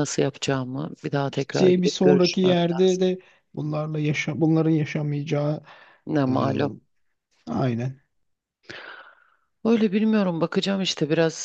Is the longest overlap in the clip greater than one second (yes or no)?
yes